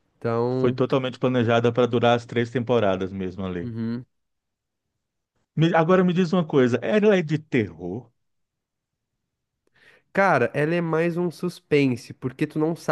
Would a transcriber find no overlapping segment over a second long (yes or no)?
yes